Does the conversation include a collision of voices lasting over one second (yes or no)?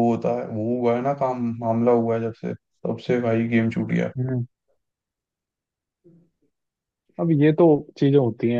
no